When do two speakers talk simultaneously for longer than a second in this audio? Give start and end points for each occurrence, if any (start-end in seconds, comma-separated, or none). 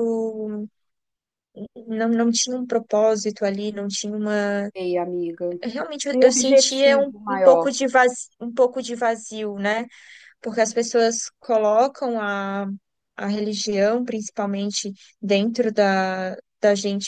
6.1-7.7